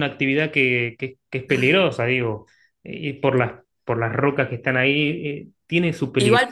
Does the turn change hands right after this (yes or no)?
yes